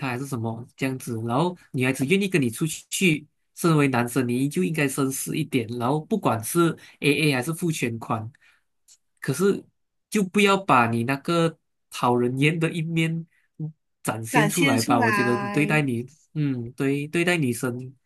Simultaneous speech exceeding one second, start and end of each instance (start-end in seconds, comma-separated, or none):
14.3-15.8